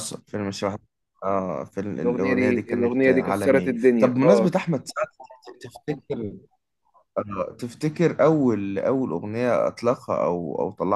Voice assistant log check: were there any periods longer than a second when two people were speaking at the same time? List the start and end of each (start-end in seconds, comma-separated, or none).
2.0-4.5